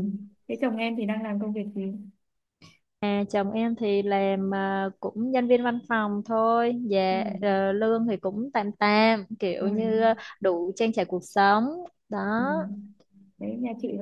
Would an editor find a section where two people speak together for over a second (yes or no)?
no